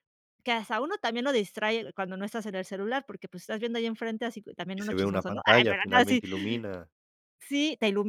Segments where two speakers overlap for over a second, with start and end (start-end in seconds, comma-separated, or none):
4.8-6.2